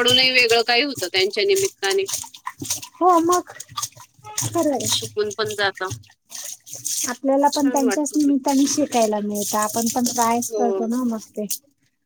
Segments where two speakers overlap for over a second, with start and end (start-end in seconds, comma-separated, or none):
none